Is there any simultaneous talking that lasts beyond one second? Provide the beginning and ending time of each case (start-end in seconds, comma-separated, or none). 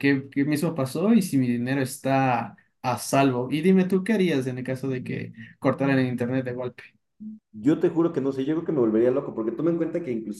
none